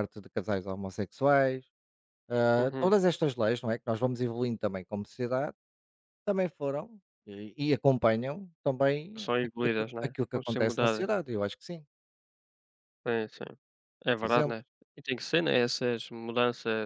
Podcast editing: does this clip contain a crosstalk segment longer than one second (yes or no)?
yes